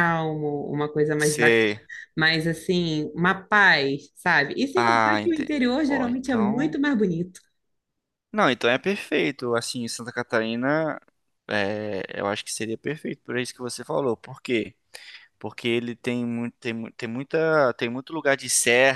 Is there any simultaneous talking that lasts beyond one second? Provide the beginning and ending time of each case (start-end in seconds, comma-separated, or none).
4.8-6.8